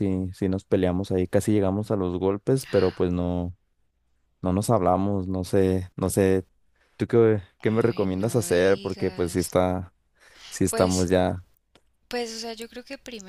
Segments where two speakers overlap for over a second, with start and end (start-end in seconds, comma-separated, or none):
7.7-9.6